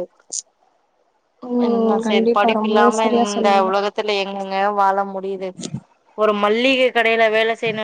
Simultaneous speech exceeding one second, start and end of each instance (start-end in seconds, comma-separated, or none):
1.6-3.7